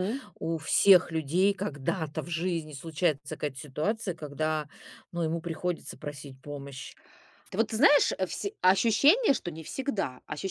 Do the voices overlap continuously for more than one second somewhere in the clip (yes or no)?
no